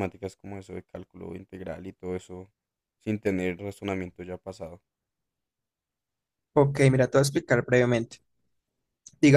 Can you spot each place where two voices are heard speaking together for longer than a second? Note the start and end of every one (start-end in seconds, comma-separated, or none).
none